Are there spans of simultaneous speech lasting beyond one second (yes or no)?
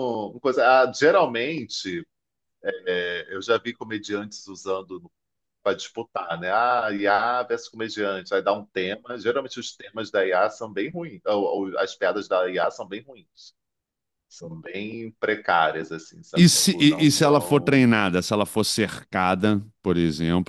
yes